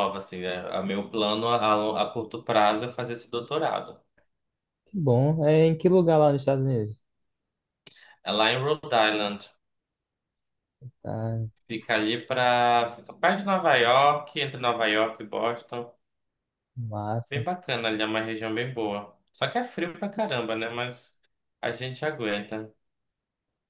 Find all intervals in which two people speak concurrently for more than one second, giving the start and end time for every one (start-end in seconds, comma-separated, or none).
none